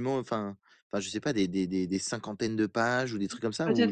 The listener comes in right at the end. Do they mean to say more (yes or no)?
yes